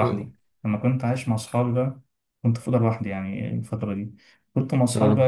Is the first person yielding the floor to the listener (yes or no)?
no